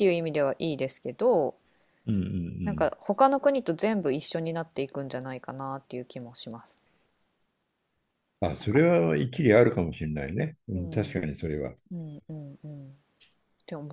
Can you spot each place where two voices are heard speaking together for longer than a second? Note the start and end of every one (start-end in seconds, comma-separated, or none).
none